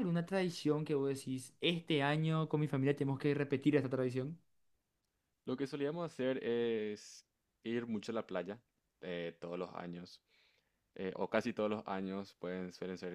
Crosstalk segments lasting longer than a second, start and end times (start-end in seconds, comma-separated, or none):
none